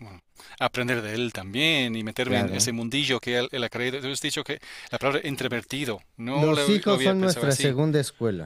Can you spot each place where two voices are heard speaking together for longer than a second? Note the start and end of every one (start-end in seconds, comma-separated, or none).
6.3-7.8